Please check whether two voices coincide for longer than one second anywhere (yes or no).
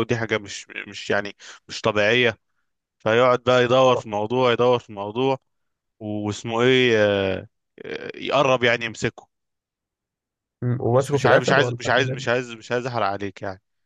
yes